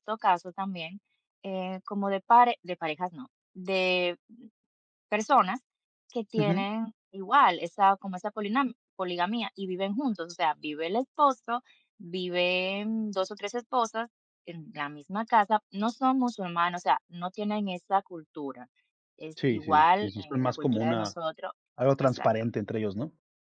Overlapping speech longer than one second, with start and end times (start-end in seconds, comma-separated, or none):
19.4-21.2